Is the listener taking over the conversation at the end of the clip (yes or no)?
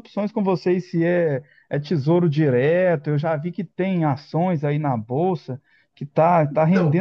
no